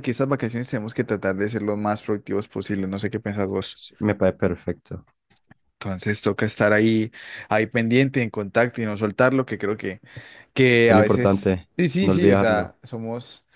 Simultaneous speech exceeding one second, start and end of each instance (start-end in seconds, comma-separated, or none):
10.9-12.8